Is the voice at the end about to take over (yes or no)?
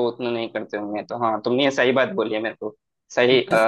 no